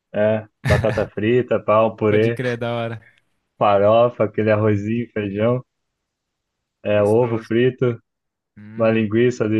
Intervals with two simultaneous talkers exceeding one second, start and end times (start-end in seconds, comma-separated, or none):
none